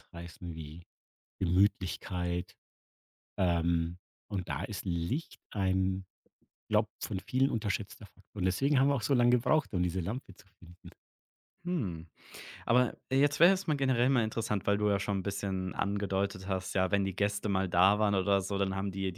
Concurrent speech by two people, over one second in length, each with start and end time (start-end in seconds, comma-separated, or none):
none